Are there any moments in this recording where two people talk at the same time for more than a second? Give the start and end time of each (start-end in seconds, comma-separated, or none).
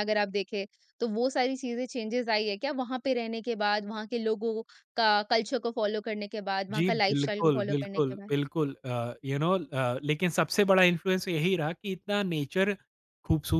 6.8-8.3